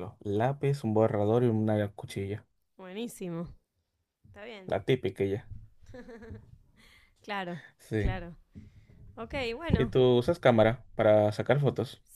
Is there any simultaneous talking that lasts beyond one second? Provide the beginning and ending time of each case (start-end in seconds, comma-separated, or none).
none